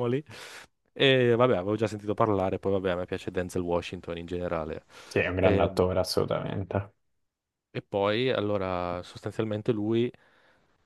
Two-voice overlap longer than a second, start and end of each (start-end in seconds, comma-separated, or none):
none